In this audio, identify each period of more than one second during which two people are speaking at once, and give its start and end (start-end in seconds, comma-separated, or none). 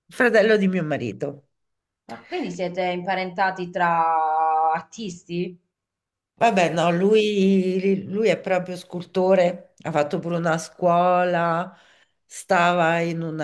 none